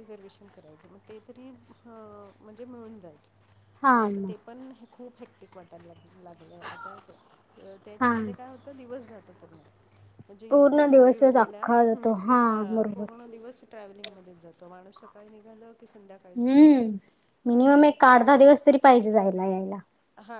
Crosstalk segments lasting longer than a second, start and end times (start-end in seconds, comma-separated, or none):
10.5-12.1